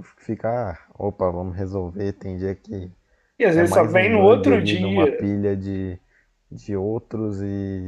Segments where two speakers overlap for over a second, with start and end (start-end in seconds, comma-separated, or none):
3.5-5.3